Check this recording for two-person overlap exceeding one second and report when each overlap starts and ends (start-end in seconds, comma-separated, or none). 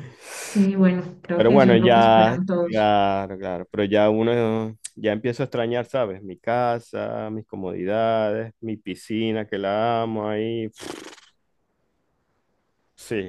1.3-2.9